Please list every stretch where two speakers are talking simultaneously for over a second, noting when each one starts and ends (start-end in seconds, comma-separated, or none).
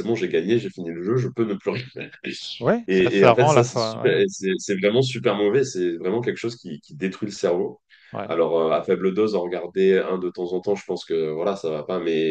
2.9-4.2